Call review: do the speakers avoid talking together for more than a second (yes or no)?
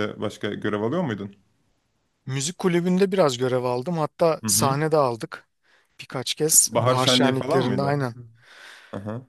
no